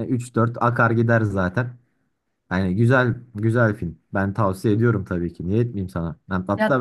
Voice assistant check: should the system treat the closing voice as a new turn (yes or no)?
no